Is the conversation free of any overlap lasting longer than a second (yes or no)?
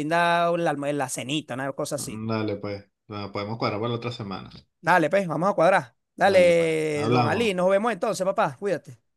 no